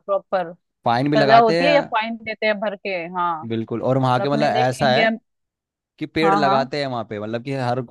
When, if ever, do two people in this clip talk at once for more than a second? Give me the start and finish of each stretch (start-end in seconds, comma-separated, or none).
3.8-5.1